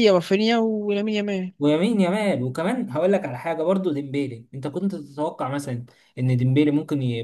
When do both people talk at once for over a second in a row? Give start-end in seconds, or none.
none